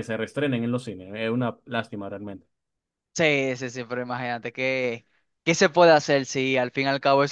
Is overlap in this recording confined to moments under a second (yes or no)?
yes